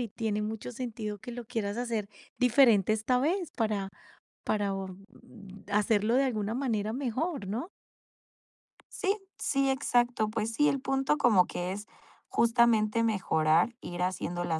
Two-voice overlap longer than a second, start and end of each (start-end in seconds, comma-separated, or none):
none